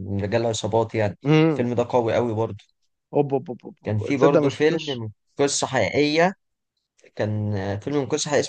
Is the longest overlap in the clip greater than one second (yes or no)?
yes